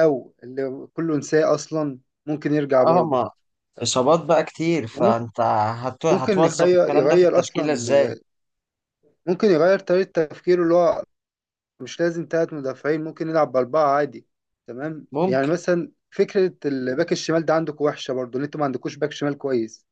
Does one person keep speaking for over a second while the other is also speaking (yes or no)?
yes